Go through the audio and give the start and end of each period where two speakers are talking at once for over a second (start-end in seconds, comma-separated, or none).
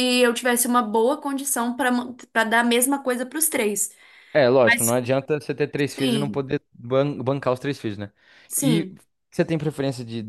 none